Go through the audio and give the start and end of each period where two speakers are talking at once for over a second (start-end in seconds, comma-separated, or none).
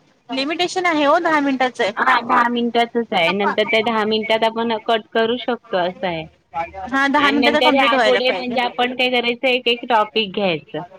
7.2-8.5